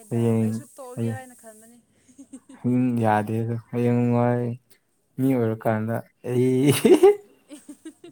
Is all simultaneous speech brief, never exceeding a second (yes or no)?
yes